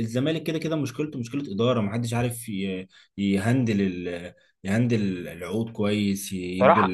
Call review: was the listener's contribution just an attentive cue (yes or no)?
no